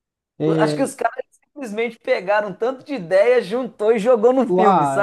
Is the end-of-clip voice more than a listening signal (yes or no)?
yes